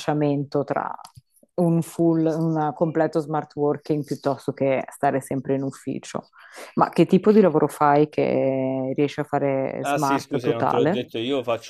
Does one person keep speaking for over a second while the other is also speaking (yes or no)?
yes